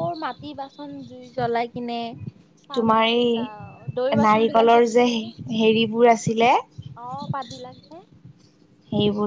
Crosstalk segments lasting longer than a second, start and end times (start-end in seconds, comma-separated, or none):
2.8-5.1